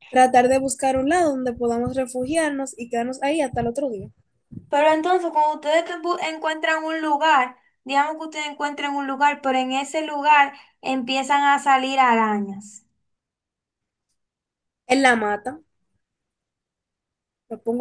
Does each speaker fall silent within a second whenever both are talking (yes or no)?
yes